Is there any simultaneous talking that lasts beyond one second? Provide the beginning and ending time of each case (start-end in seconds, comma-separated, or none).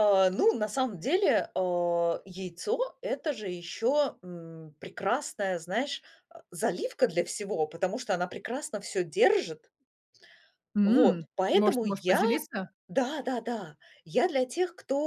10.8-12.2